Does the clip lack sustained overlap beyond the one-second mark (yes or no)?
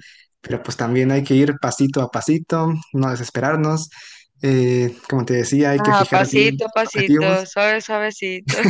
no